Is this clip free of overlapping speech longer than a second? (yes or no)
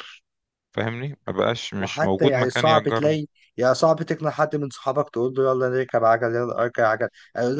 no